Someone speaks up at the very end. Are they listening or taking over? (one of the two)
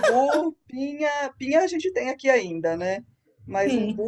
listening